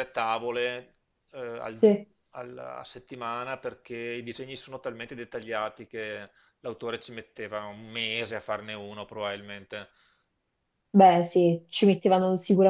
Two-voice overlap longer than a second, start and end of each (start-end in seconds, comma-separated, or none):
none